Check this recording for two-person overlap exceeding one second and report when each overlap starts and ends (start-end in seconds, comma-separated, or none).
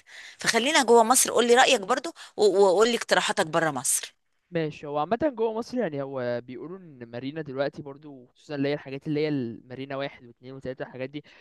none